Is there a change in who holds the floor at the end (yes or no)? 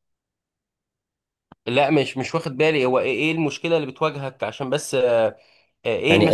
yes